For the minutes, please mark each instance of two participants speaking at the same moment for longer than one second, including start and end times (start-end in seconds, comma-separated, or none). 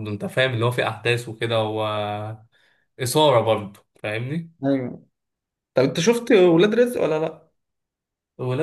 none